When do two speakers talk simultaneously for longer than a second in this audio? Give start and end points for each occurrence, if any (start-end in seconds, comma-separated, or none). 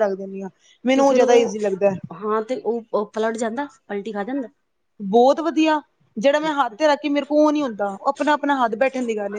none